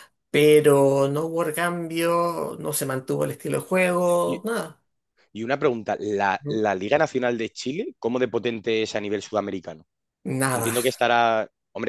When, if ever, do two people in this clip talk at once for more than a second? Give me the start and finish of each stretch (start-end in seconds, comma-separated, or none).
none